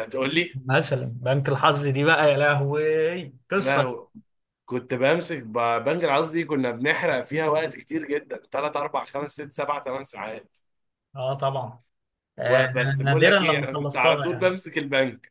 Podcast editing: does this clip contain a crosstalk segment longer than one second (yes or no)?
yes